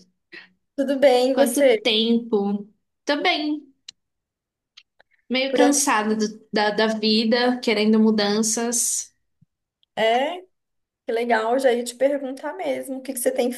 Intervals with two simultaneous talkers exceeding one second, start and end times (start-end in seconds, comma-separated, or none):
none